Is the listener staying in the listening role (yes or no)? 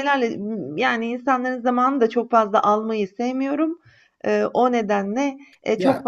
yes